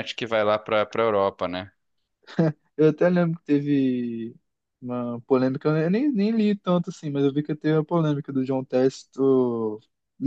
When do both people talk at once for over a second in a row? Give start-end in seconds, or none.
none